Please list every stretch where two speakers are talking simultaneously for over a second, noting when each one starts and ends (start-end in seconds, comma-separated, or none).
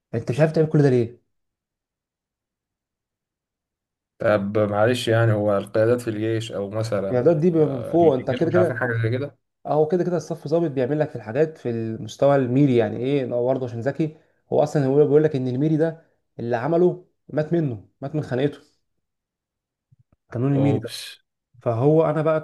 7.1-8.8